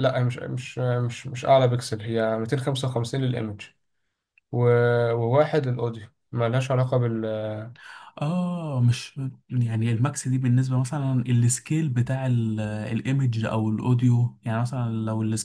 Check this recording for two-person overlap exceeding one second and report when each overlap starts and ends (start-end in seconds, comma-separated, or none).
none